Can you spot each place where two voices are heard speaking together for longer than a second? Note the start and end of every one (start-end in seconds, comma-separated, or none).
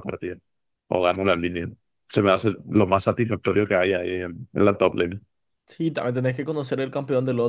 none